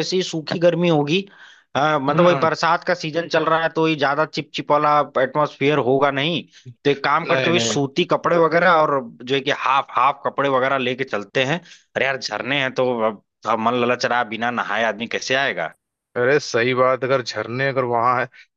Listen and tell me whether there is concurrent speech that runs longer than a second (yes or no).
no